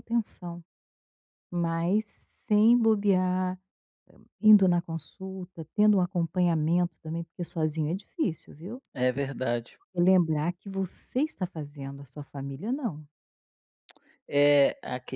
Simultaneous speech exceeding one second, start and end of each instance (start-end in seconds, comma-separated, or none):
none